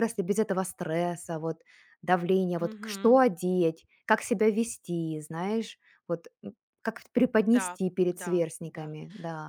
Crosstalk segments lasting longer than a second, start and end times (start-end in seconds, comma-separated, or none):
7.4-8.9